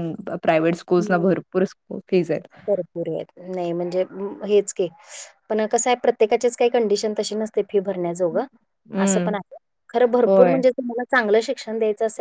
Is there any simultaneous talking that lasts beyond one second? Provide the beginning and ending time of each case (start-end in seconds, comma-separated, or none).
none